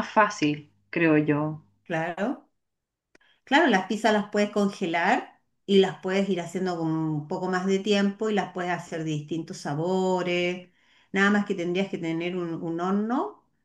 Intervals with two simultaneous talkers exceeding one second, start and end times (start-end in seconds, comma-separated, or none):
none